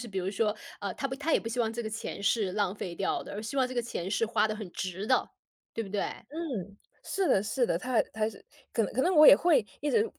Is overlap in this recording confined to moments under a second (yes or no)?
yes